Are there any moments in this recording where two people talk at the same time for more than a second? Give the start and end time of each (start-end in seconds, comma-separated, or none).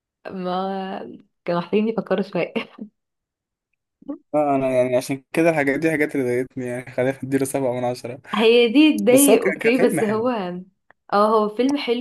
9.1-10.3